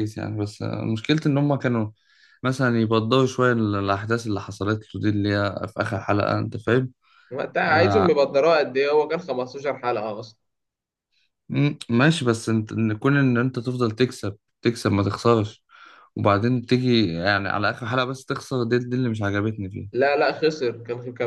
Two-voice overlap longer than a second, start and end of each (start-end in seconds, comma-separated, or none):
none